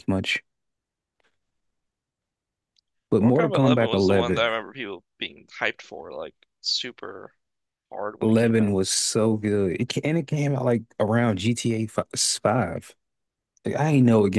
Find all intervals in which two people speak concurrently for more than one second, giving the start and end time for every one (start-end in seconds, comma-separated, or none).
3.2-4.5